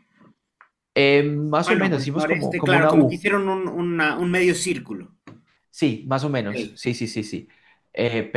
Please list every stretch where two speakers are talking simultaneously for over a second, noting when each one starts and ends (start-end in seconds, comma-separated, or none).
1.6-3.2